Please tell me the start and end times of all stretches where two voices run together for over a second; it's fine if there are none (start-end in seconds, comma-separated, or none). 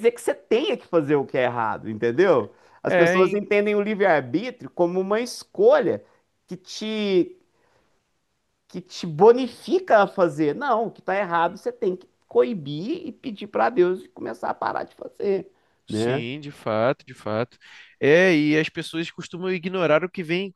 none